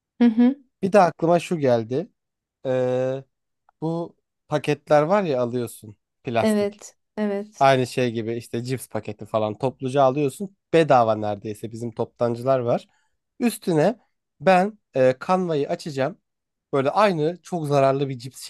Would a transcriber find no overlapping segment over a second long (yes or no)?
yes